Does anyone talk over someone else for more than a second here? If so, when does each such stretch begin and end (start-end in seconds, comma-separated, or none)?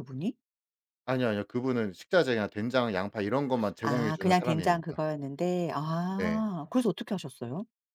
3.8-5.0